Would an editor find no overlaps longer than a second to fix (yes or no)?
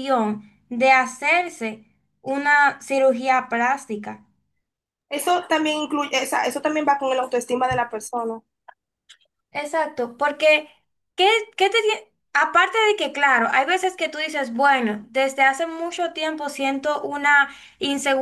yes